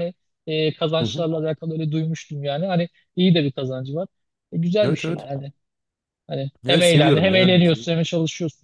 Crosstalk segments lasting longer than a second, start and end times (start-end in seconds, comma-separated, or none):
6.7-7.9